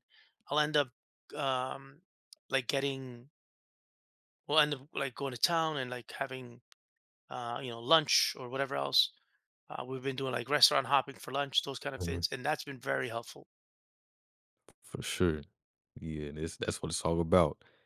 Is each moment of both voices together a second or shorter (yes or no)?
yes